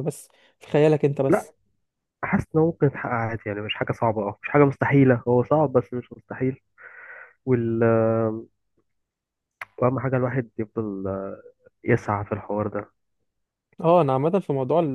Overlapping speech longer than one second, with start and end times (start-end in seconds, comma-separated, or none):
none